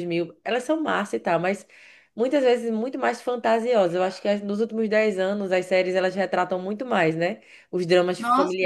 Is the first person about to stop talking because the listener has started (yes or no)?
no